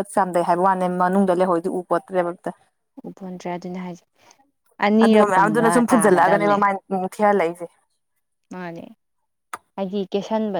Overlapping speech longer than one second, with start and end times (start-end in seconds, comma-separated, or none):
5.0-6.6